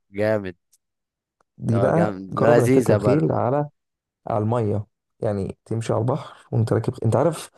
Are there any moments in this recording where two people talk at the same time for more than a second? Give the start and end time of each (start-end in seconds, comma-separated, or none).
1.7-3.4